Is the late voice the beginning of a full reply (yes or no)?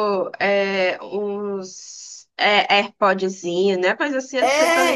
yes